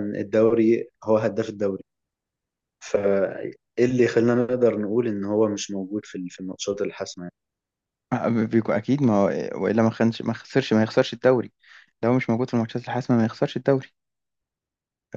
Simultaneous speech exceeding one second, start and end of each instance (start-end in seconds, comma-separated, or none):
none